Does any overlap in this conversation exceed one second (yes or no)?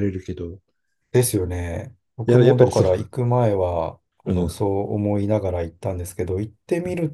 no